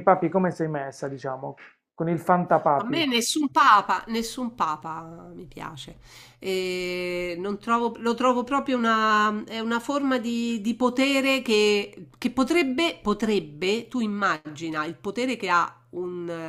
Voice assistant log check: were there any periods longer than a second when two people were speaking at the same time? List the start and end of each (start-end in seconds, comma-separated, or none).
none